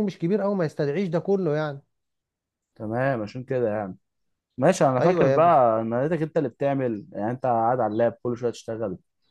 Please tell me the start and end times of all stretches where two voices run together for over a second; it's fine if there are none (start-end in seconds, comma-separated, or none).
none